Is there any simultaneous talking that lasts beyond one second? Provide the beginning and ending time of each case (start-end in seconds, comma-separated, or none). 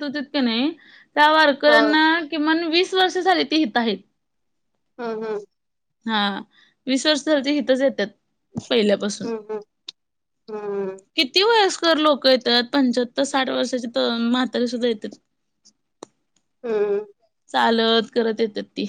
none